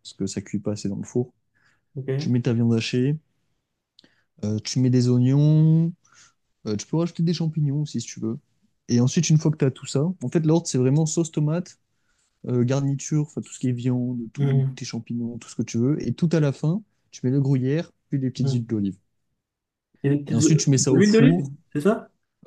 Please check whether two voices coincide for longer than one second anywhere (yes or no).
yes